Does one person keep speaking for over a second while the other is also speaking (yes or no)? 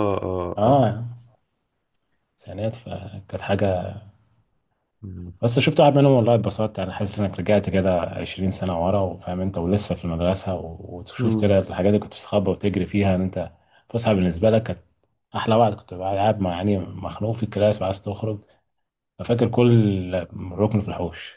no